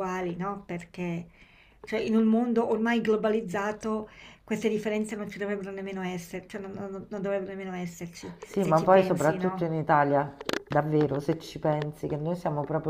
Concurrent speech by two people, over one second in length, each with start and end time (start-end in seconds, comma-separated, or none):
8.4-9.7